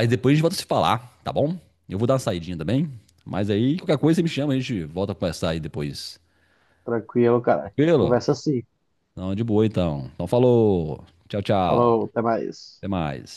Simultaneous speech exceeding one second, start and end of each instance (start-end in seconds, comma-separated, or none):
none